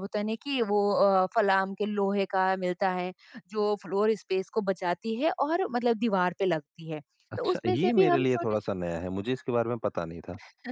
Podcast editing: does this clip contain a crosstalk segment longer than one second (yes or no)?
yes